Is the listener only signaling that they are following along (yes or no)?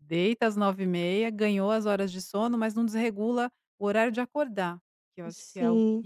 no